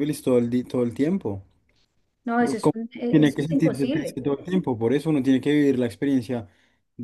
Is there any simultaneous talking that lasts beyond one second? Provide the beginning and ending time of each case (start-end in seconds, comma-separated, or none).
2.4-4.2